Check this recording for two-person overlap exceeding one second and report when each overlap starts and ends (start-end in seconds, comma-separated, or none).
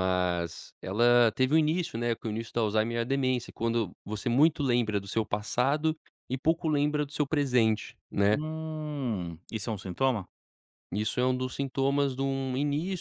none